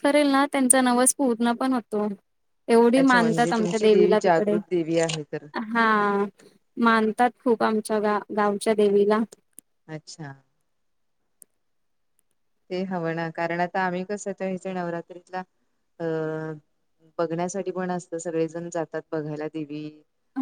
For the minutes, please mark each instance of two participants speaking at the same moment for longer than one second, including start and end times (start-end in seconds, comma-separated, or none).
3.0-4.6